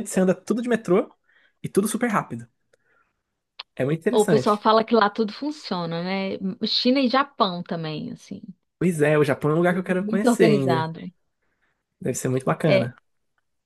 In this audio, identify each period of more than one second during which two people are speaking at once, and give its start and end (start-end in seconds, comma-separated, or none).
9.7-10.9